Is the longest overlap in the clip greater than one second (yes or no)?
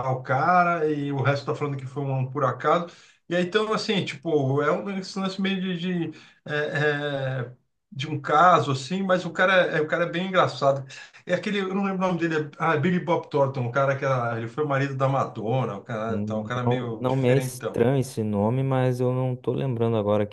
yes